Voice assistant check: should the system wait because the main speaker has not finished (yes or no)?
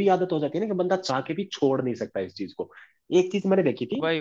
yes